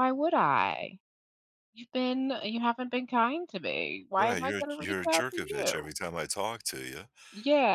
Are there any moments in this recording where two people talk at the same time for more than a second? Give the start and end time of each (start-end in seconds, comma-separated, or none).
4.2-5.9